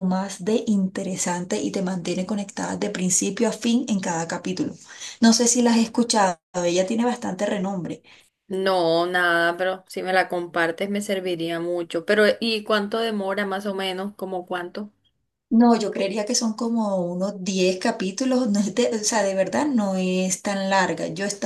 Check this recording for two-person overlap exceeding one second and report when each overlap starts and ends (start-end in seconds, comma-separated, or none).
none